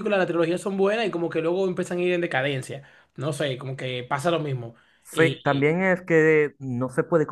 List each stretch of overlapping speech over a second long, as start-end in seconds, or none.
none